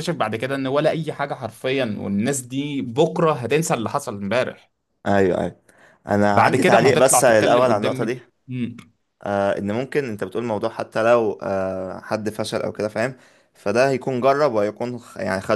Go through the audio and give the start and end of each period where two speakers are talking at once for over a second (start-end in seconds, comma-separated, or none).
6.3-8.2